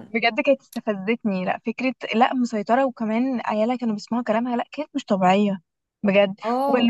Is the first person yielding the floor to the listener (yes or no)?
no